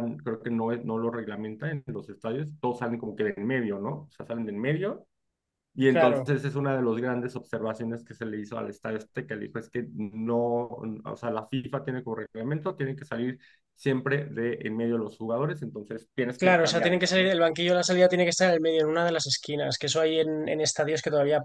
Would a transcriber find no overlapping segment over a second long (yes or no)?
no